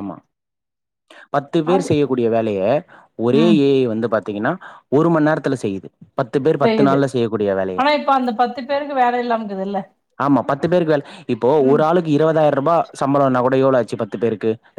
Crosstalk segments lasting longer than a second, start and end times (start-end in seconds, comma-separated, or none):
none